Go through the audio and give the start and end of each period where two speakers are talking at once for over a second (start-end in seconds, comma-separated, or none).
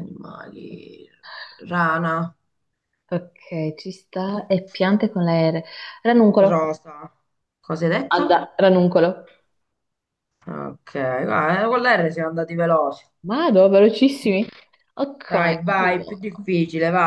15.3-16.5